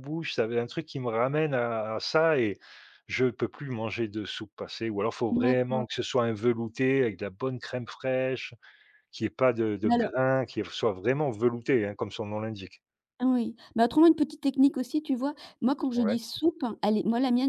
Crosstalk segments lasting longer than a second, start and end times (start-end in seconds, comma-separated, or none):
none